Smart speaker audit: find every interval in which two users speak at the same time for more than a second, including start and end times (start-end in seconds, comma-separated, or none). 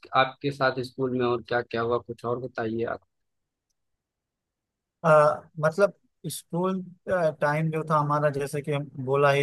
none